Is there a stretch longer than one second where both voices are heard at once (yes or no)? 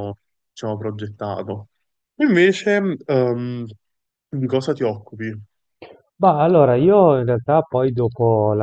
no